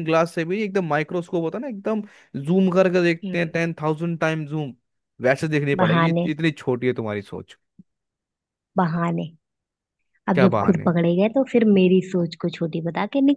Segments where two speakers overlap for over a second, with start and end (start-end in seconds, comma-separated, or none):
none